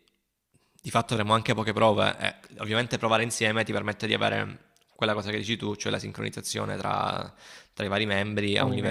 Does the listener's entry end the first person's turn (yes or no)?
no